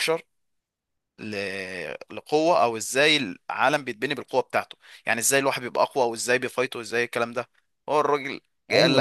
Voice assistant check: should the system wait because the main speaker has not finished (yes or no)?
no